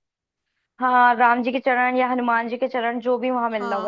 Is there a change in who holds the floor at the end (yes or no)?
yes